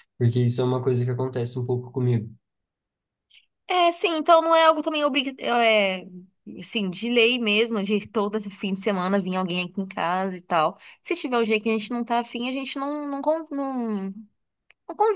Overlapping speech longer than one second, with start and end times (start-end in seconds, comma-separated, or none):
none